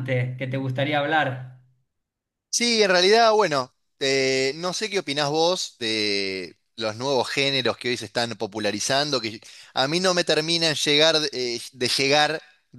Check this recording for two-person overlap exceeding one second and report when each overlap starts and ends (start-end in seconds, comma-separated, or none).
none